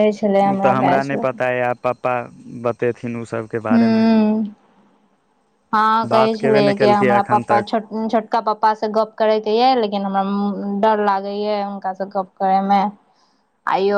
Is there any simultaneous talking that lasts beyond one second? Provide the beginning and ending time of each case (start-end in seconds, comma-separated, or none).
6.1-7.7